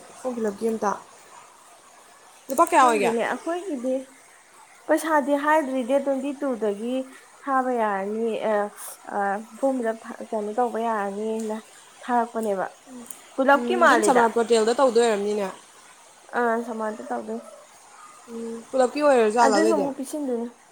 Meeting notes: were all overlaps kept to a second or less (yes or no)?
yes